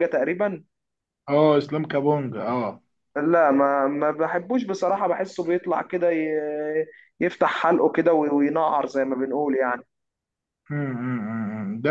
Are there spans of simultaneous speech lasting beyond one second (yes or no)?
no